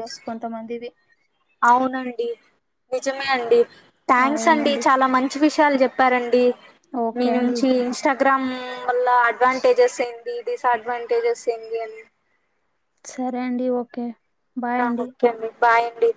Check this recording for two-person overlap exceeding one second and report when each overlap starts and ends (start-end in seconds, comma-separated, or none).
none